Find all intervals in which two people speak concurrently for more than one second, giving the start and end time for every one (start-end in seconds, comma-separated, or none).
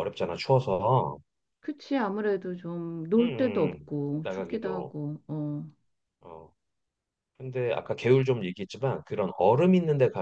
3.2-4.9